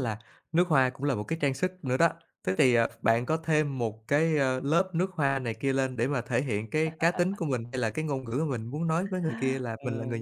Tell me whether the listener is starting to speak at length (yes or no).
yes